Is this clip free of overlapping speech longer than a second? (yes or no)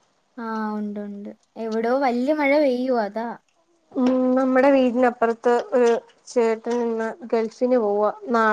yes